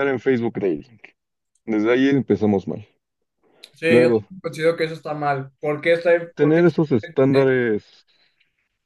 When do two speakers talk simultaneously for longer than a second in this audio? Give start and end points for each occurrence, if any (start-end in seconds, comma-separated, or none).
6.3-7.6